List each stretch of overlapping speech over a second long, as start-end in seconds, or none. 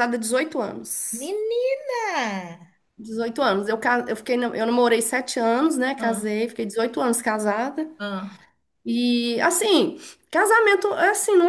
none